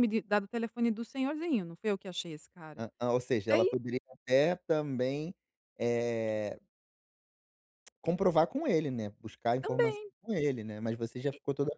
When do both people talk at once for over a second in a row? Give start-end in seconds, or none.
none